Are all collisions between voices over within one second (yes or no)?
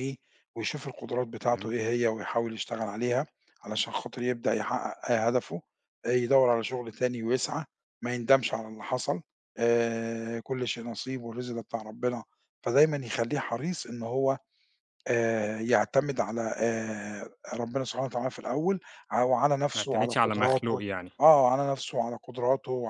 no